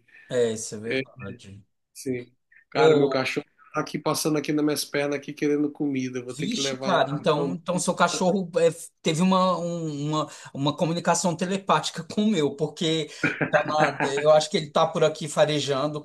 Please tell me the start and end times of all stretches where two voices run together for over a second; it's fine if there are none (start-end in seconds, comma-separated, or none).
6.3-7.6